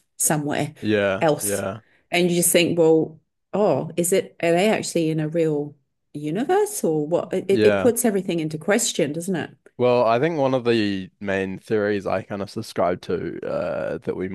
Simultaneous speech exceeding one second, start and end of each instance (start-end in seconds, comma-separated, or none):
none